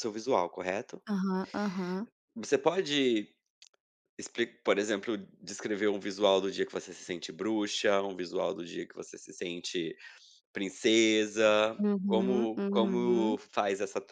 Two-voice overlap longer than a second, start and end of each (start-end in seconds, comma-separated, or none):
11.8-13.3